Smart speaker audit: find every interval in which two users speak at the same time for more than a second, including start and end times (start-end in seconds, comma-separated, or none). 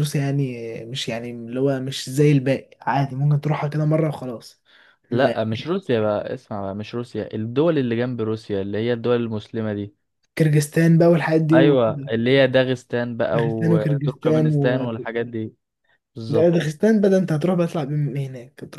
13.3-14.6